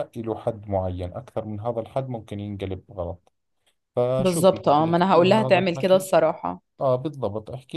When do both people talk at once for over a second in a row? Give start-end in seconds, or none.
4.2-6.1